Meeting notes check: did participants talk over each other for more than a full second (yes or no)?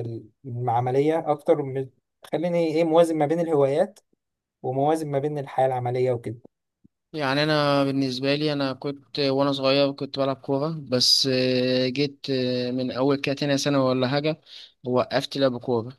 no